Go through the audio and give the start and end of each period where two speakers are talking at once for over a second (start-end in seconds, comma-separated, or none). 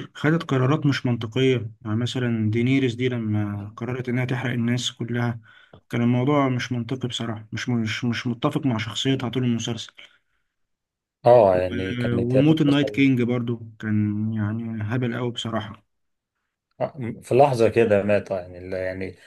11.5-13.1